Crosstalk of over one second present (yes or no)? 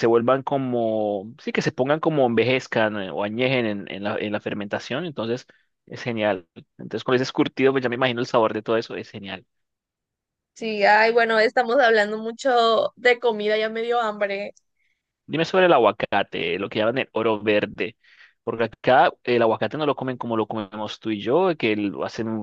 no